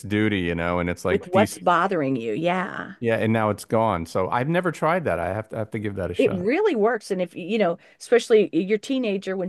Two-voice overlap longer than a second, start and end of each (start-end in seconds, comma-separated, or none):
none